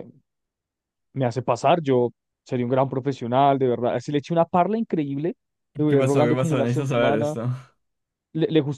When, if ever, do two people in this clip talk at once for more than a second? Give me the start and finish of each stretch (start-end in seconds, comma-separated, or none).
5.9-7.4